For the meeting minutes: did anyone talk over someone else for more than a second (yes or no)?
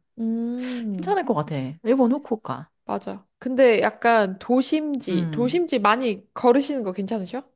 no